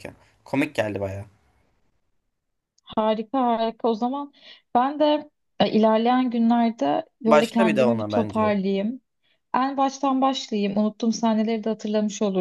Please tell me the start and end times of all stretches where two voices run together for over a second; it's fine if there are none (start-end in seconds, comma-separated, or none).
7.2-8.6